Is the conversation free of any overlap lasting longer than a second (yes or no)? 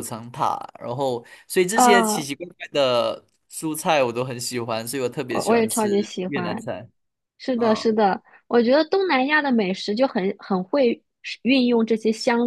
no